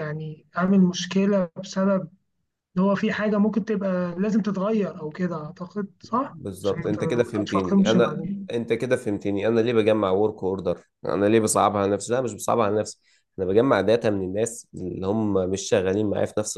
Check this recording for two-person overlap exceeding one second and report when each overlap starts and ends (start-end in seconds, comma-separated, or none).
6.1-8.5